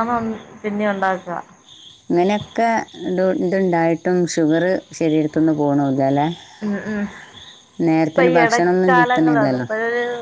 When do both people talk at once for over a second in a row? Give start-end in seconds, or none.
8.4-9.7